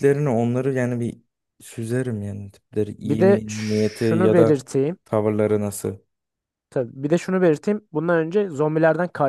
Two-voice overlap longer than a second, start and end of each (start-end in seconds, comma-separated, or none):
3.0-4.6